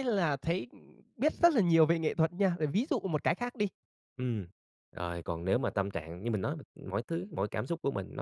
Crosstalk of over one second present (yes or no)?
no